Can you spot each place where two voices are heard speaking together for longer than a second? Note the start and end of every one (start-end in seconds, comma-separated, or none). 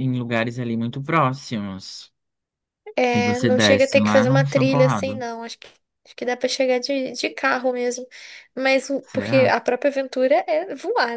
3.1-5.2